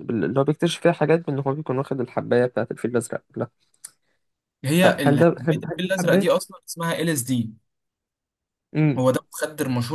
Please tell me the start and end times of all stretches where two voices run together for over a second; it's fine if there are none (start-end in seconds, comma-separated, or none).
4.8-6.3